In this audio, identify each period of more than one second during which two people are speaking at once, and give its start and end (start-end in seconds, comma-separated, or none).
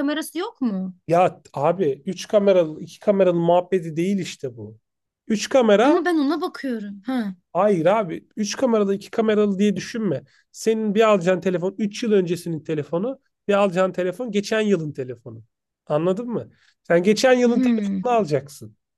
none